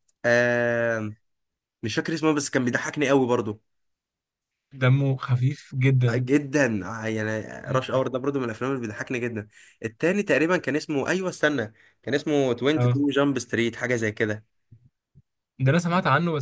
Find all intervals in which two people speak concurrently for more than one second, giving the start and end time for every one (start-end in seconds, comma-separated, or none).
none